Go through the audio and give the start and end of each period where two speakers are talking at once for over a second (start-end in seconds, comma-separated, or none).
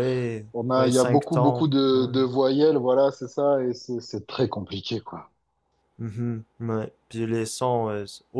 0.5-2.1